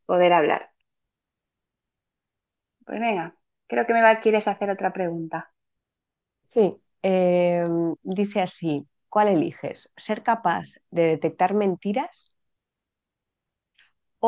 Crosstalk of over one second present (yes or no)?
no